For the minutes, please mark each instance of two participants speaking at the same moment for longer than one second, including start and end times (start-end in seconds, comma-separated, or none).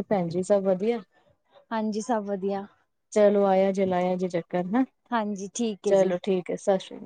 none